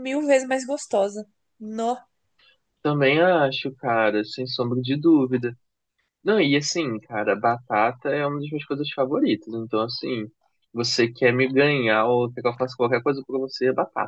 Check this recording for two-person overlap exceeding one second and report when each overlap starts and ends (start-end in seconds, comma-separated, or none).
none